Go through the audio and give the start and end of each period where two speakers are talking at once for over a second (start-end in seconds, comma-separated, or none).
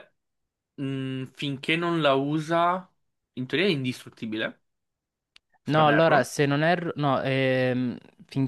none